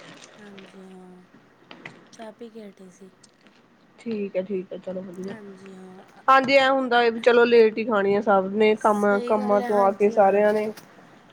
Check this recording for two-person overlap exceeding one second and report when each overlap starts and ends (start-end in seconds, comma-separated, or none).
8.8-10.4